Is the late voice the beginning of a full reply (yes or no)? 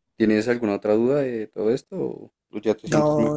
yes